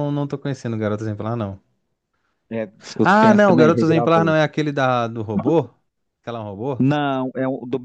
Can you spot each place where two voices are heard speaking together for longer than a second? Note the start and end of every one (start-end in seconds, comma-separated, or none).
3.0-4.3